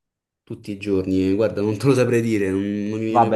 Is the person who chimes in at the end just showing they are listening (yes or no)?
no